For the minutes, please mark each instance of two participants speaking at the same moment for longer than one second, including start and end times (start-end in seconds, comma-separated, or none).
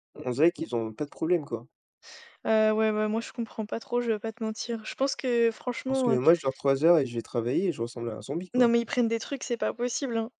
none